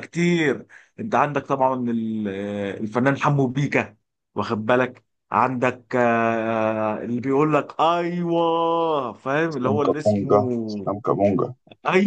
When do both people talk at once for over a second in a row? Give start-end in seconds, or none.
9.5-10.9